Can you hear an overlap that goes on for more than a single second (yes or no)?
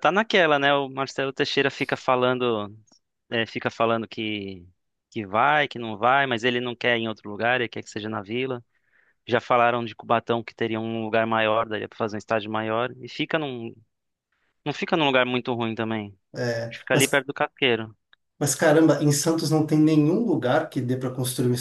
no